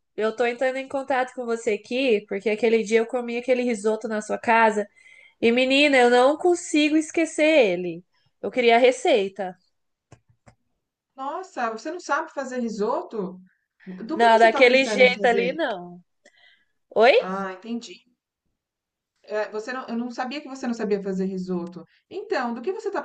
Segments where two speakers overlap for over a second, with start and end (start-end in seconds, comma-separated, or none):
14.1-15.6